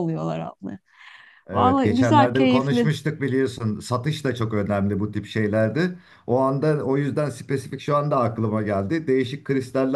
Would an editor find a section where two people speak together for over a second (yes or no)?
yes